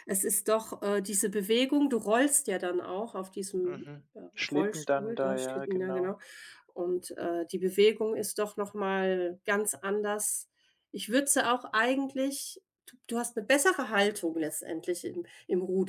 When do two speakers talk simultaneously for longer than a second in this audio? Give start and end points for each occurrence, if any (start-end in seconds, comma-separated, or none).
3.6-6.2